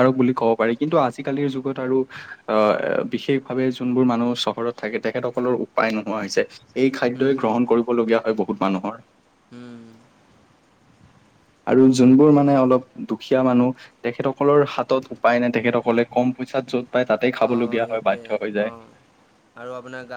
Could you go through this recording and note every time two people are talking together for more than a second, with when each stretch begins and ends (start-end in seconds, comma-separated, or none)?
17.4-18.7